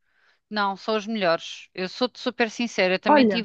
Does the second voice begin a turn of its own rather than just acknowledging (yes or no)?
no